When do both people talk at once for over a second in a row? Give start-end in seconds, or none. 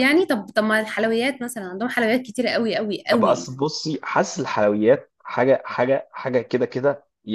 none